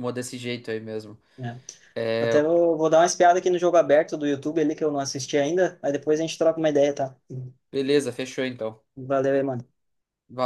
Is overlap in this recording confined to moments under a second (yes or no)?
yes